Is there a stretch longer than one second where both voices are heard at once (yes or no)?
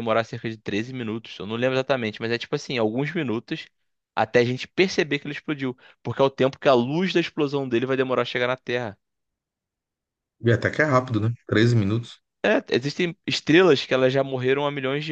no